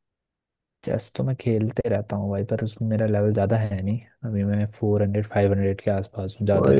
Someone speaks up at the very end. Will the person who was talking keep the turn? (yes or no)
no